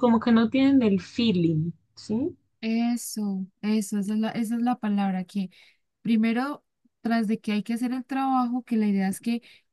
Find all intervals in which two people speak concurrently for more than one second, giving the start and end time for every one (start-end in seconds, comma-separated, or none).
none